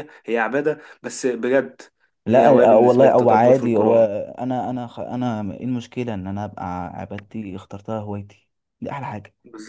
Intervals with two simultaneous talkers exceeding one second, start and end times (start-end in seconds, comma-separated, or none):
2.3-4.0